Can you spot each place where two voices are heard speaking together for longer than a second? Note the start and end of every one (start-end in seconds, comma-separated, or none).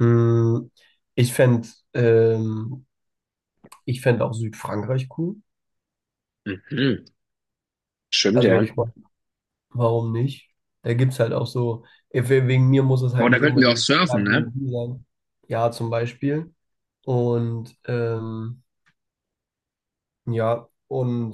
13.2-14.5